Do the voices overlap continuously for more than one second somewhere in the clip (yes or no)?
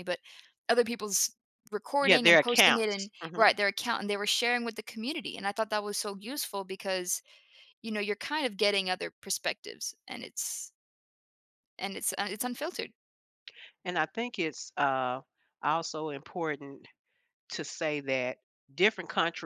yes